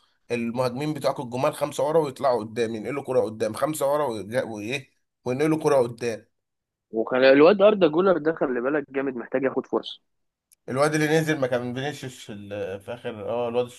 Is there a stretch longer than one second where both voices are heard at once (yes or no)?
no